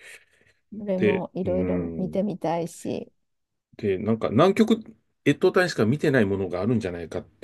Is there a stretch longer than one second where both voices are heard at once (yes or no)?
yes